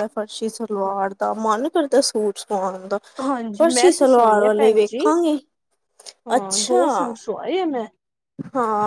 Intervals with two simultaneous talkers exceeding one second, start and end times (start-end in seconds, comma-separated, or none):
3.6-5.0